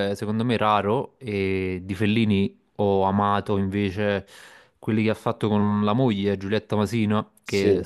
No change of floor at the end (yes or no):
yes